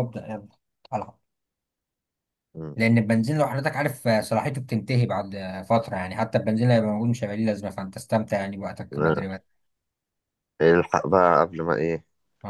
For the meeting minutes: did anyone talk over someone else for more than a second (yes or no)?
no